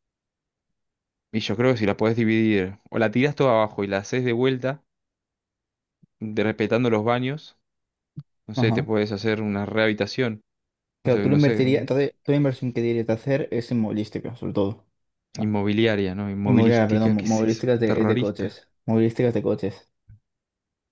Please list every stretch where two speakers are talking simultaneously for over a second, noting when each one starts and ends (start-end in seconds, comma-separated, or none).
16.4-18.6